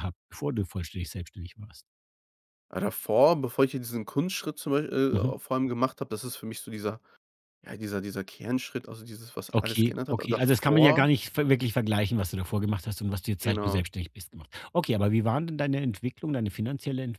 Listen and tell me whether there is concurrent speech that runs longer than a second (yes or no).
yes